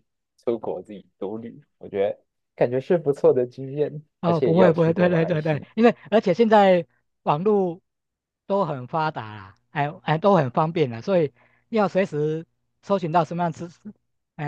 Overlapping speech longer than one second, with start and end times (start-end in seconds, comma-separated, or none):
4.2-5.7